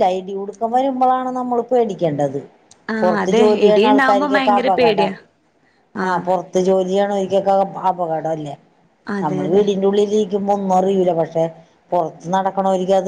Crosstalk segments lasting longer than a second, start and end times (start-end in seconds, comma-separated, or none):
3.0-5.1